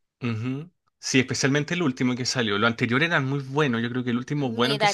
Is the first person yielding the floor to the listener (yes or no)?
yes